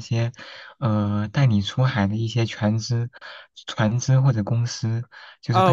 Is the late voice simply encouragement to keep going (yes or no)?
no